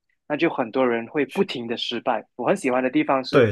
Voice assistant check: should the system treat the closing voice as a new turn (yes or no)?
no